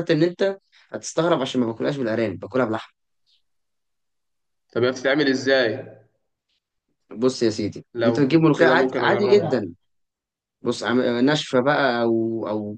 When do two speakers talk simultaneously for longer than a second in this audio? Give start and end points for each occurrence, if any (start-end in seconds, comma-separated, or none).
7.9-9.7